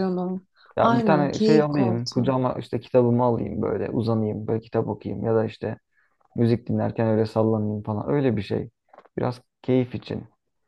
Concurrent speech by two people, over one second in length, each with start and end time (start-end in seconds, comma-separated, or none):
0.8-2.3